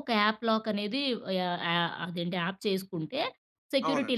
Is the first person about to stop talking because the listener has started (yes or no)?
no